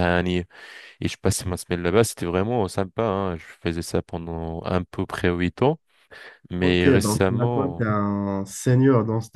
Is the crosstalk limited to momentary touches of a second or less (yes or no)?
no